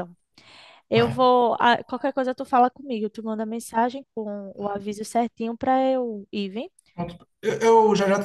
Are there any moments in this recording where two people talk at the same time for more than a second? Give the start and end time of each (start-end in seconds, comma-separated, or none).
none